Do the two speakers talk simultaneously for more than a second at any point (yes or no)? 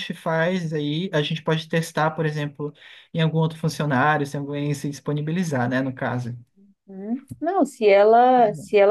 no